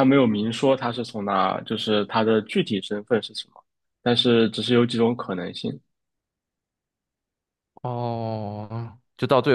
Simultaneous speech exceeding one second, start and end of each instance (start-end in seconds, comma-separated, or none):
none